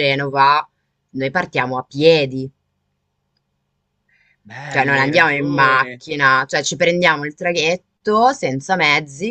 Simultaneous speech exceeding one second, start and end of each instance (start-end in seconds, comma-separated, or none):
4.7-6.0